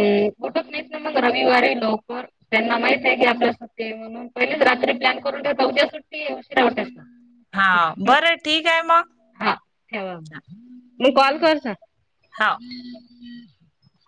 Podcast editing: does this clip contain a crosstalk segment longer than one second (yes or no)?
no